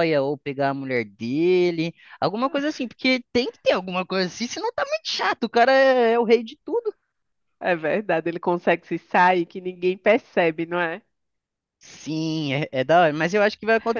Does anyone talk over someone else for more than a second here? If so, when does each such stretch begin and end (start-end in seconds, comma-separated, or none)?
none